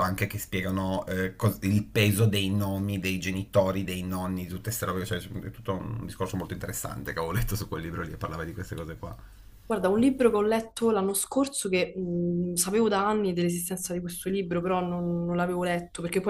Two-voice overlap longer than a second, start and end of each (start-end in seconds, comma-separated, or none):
none